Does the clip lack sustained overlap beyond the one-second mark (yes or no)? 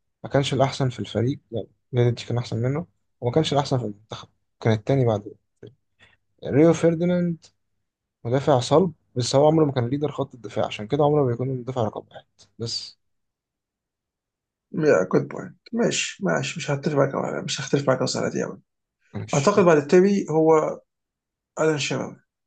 yes